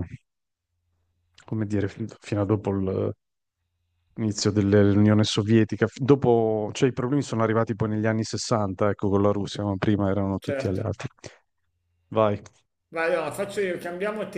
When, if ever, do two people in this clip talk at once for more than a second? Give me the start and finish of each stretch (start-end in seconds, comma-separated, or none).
none